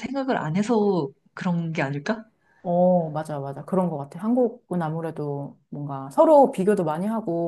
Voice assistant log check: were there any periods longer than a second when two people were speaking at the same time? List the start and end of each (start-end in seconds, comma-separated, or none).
none